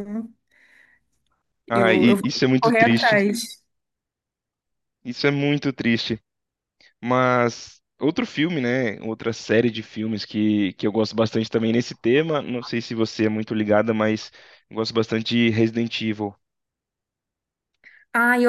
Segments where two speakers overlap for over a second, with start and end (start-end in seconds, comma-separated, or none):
1.7-3.2